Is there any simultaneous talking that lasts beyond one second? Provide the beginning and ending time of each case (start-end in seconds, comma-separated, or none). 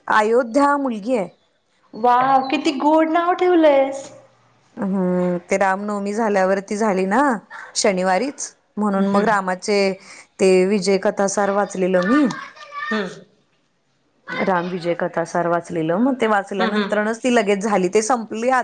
none